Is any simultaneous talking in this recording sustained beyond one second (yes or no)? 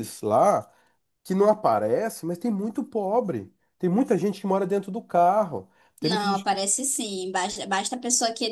no